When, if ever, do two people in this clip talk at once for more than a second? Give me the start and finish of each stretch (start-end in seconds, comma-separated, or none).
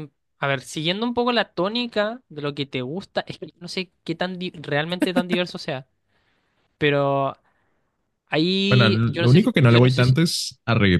8.7-10.2